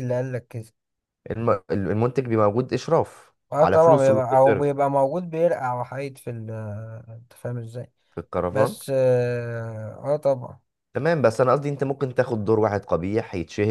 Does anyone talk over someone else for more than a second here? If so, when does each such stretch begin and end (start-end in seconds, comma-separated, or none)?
3.5-4.8